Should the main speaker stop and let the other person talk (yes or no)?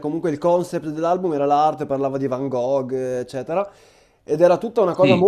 no